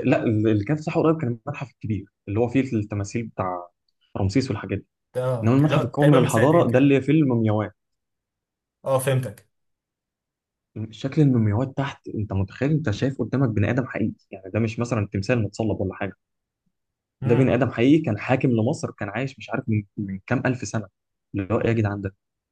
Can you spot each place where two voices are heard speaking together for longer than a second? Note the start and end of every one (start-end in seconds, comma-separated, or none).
5.4-7.0